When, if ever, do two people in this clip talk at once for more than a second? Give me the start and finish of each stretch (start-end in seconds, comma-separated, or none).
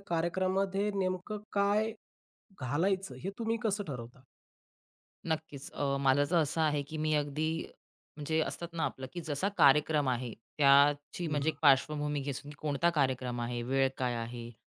none